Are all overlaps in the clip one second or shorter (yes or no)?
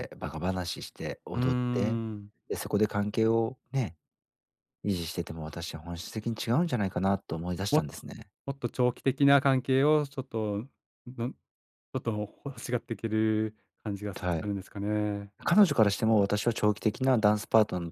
yes